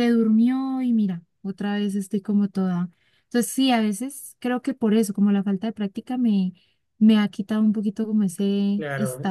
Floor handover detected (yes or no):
yes